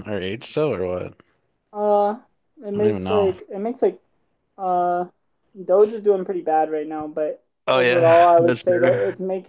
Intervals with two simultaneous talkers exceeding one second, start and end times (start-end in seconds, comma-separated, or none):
7.7-9.0